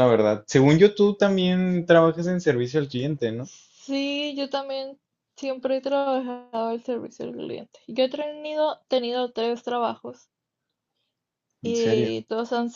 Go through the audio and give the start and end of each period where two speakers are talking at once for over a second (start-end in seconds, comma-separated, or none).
none